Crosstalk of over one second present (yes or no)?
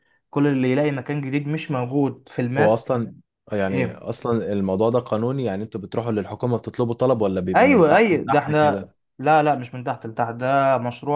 yes